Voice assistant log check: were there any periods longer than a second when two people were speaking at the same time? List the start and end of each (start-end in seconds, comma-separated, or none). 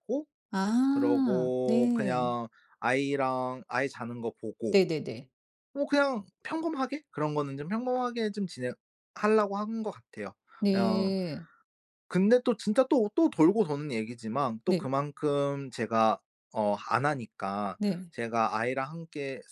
0.9-2.3